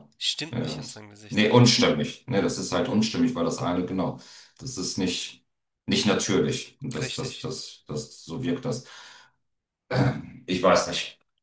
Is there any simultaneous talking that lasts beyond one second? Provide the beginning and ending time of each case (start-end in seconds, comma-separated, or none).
0.5-1.9